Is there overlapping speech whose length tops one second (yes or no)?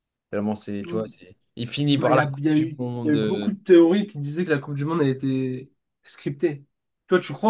yes